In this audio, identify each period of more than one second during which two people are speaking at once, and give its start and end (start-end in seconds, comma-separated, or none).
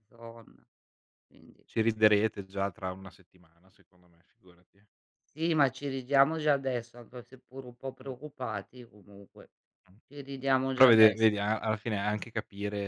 none